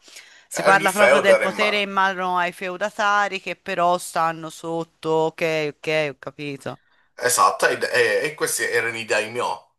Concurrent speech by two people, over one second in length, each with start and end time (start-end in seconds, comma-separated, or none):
0.5-1.9